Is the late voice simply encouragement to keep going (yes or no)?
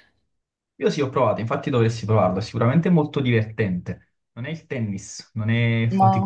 yes